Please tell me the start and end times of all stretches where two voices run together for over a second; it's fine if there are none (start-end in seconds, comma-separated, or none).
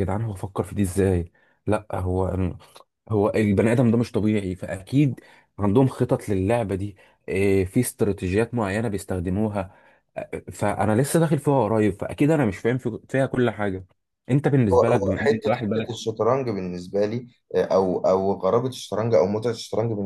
14.7-16.1